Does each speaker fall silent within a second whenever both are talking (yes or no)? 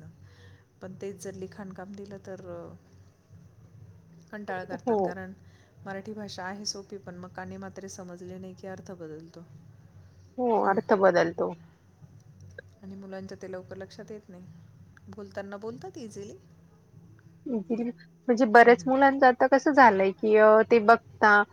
yes